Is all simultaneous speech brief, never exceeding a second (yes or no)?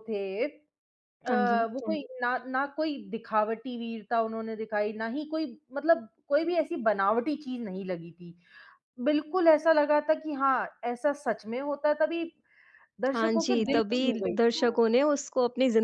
no